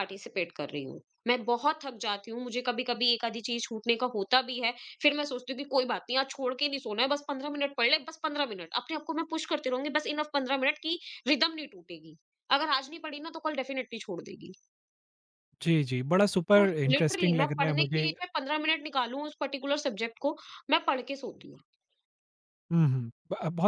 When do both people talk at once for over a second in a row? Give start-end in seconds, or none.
16.6-18.1